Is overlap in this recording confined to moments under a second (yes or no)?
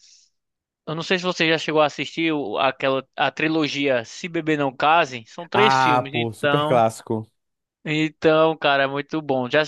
no